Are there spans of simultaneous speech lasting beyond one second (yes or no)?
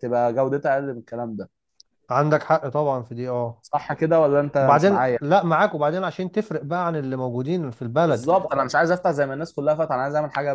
no